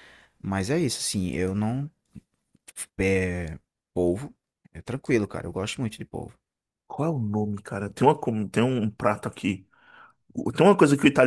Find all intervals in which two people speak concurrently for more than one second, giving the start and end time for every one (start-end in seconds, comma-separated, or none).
none